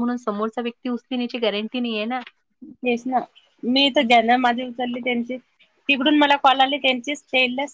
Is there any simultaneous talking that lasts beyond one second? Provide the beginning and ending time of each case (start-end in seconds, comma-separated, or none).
none